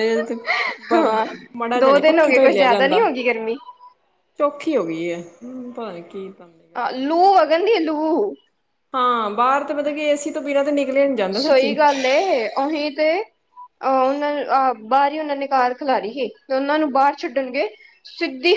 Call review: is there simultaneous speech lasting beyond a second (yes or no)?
yes